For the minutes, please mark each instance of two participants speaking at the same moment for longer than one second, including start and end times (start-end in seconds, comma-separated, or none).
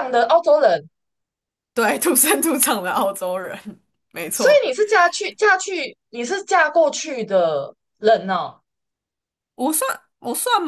none